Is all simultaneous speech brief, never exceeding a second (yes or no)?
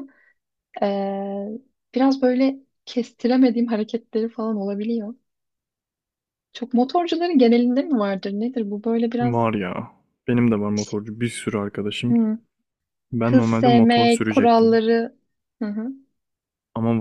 no